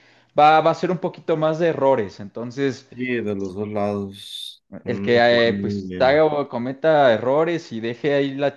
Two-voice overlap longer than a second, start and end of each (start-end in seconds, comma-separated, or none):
4.8-6.2